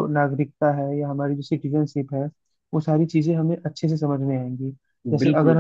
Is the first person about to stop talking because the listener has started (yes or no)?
no